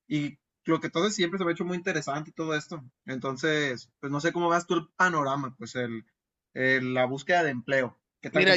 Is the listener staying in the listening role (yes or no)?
no